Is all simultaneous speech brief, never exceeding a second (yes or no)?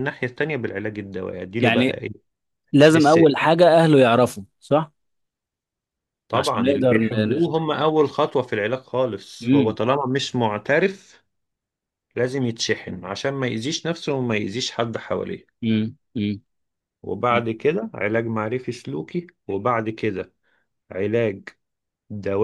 no